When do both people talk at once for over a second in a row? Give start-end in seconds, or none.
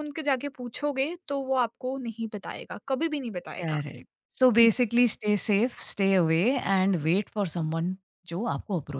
none